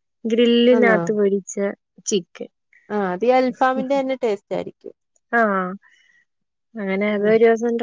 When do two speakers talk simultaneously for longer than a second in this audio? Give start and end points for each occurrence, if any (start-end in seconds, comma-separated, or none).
none